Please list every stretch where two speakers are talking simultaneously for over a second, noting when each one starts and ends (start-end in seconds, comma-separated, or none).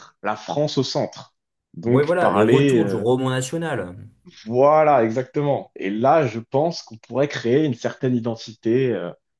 1.9-3.1